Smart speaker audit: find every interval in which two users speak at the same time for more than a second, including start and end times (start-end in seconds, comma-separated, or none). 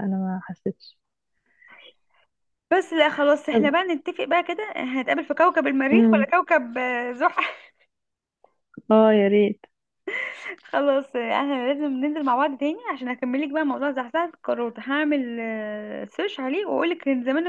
none